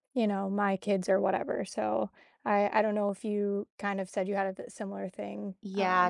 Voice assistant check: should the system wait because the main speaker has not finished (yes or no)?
no